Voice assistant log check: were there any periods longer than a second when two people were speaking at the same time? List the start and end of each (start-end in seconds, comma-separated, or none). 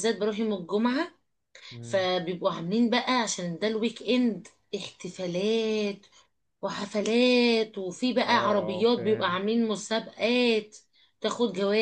8.2-9.4